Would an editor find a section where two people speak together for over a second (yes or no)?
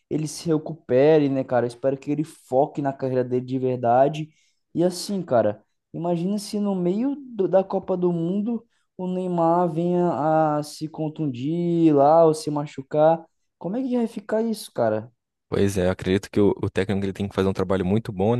no